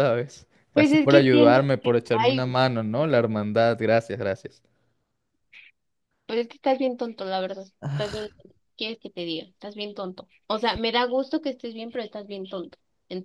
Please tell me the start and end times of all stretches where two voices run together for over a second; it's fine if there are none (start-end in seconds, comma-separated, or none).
0.7-2.4